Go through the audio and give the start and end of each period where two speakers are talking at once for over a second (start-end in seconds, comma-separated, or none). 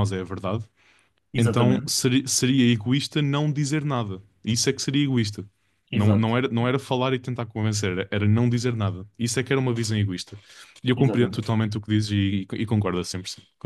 none